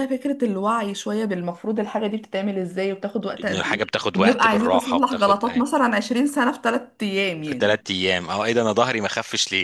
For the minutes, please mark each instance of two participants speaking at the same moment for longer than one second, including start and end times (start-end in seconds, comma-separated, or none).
3.4-5.4